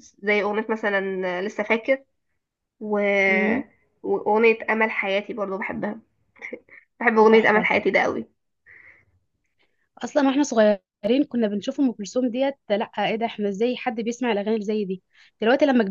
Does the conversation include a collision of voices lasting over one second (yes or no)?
no